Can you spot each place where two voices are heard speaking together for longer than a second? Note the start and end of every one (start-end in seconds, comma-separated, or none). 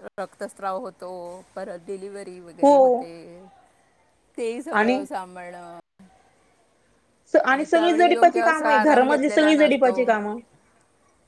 7.7-10.0